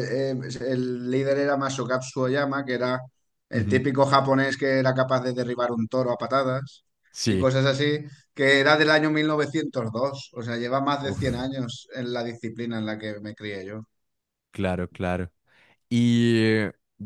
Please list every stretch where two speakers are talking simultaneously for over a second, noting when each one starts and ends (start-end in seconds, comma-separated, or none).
none